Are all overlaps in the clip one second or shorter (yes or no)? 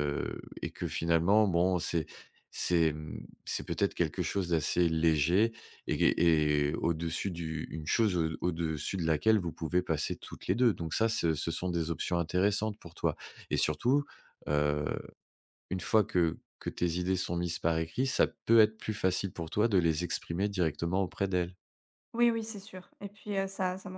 yes